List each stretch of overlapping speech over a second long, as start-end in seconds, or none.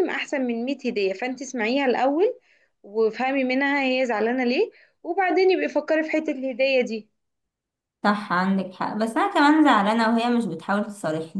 none